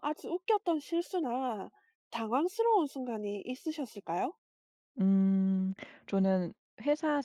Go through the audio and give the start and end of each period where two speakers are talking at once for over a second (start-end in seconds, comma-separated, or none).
none